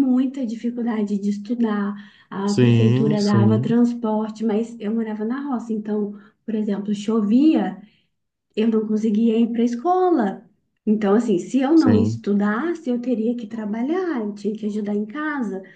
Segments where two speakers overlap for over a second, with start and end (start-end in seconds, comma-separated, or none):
2.5-3.8